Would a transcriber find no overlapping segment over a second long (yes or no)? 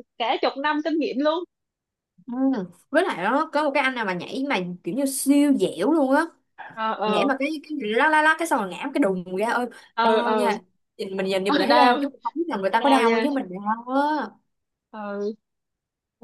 yes